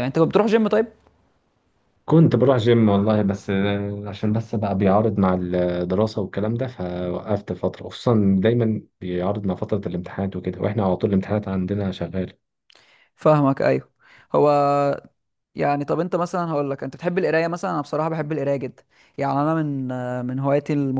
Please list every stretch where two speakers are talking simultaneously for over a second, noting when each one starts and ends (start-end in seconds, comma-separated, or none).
none